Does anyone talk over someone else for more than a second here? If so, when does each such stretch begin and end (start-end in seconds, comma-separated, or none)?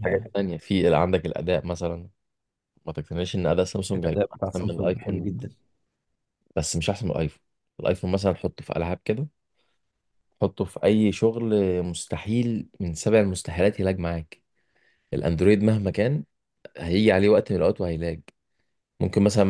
3.9-5.3